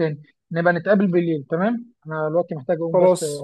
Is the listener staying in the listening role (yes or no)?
yes